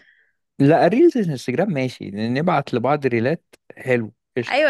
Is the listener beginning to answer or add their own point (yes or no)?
yes